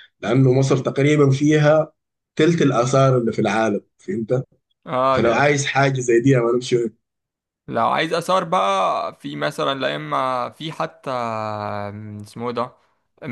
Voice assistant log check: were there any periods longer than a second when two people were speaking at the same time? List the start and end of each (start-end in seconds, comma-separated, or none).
none